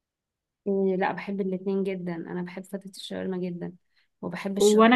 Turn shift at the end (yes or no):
yes